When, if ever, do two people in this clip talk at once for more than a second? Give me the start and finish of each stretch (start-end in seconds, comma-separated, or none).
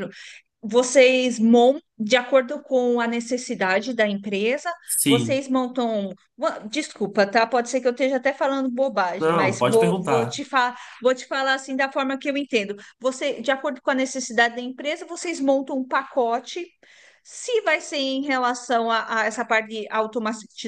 9.2-10.4